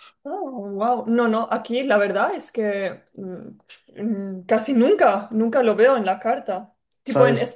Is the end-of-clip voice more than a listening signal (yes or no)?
no